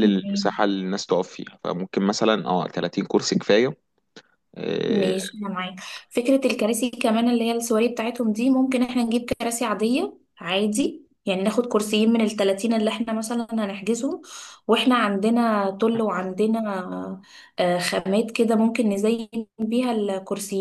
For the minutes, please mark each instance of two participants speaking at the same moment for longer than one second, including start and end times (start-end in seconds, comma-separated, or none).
none